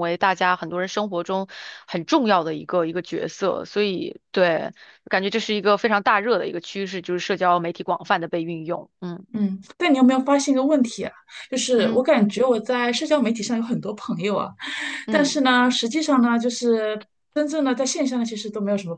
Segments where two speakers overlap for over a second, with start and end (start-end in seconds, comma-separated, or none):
none